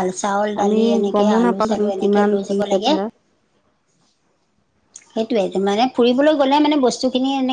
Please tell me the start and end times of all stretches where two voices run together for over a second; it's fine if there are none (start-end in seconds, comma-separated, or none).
0.6-2.9